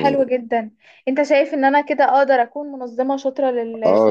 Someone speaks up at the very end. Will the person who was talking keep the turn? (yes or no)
no